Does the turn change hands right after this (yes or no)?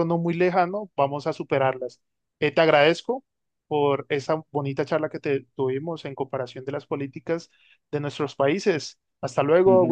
yes